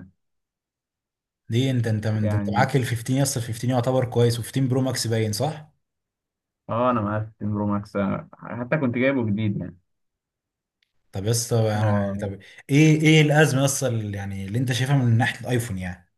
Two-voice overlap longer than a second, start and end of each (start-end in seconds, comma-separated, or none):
none